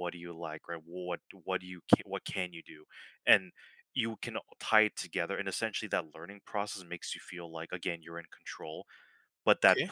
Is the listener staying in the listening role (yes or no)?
yes